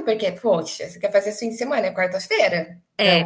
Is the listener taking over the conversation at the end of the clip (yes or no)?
yes